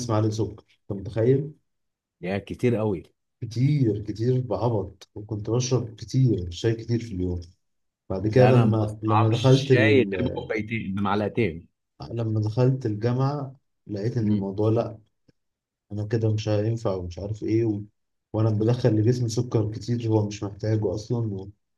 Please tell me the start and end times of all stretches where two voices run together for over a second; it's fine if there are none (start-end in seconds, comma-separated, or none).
8.3-10.1